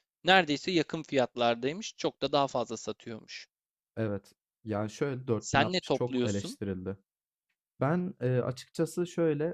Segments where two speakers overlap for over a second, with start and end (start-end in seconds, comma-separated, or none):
5.4-6.6